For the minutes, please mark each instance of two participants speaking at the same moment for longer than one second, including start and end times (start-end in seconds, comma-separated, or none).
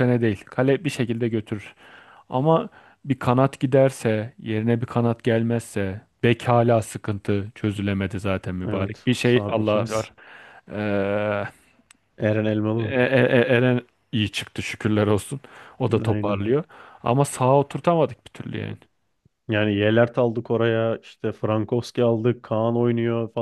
8.6-10.1